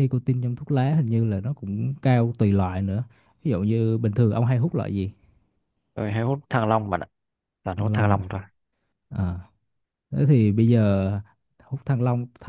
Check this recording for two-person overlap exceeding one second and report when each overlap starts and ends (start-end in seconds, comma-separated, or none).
none